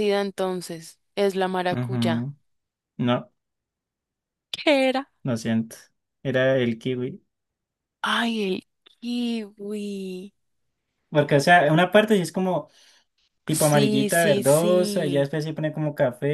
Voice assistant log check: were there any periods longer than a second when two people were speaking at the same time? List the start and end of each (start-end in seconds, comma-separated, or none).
13.5-15.2